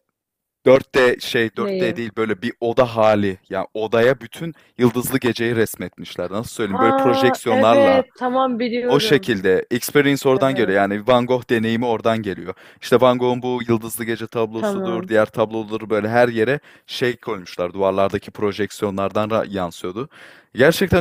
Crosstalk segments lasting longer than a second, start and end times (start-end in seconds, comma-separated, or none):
6.6-8.0